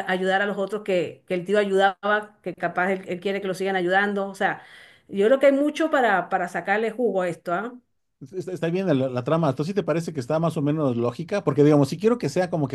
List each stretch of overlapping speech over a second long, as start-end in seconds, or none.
none